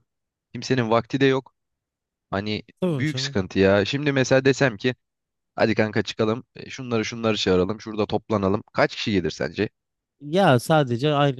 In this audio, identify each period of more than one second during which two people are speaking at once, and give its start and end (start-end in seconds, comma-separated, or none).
none